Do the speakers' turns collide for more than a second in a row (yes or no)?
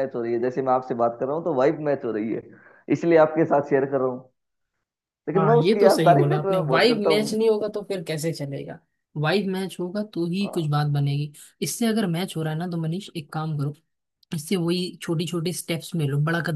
yes